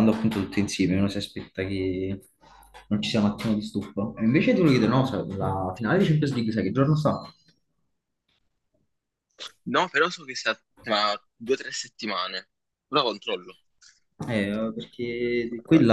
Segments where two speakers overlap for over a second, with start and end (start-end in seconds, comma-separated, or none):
none